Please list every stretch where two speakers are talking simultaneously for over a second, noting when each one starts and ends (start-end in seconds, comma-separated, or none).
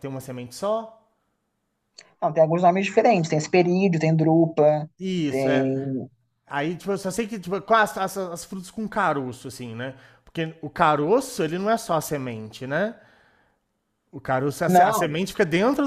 none